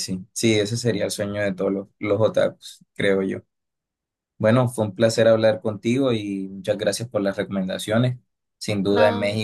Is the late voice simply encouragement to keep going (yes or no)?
yes